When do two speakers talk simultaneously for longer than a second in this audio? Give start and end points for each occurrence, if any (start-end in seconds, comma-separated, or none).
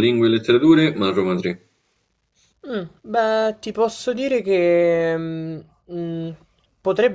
none